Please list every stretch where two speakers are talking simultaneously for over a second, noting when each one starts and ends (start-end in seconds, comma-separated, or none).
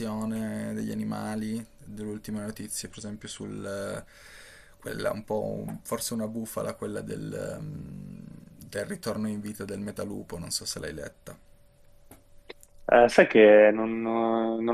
none